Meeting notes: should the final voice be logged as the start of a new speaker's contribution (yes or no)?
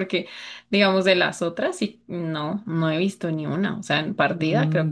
yes